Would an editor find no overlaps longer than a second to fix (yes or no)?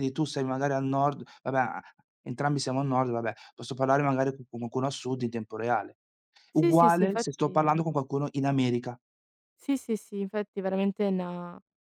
no